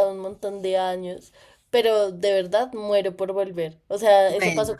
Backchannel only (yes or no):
yes